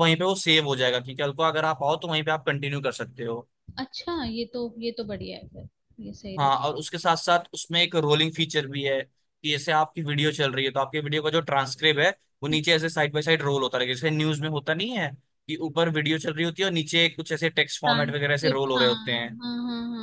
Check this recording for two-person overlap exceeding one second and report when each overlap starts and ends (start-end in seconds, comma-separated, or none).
17.8-19.4